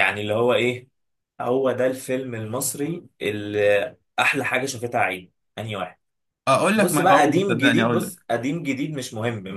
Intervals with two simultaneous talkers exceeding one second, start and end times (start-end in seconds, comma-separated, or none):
6.8-8.1